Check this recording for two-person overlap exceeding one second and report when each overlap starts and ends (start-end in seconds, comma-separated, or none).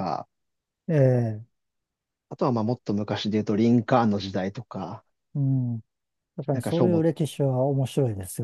none